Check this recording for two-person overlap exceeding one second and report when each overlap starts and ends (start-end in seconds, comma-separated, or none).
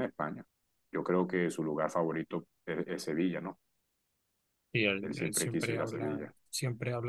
5.0-6.3